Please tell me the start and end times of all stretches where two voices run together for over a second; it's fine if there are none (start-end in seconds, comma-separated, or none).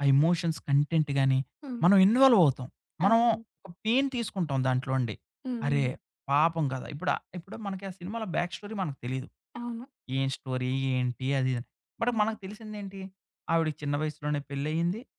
none